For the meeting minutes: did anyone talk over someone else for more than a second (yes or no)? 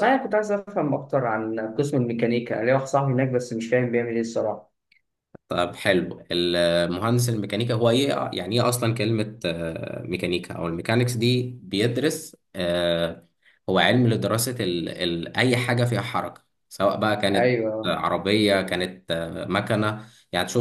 no